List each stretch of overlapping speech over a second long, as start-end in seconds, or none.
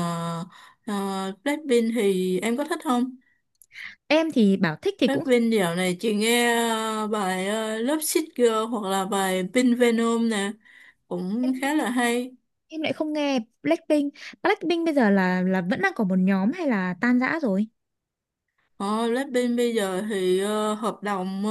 none